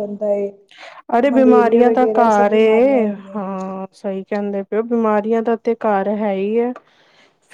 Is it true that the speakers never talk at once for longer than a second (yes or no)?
no